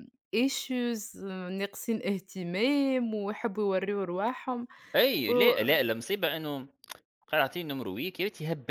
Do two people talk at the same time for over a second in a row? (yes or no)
no